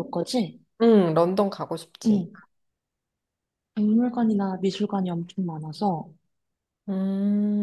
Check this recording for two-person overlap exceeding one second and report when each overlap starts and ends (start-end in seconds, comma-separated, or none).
none